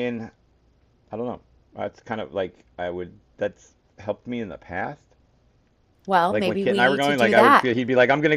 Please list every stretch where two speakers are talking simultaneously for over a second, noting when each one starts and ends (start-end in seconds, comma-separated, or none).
6.3-7.7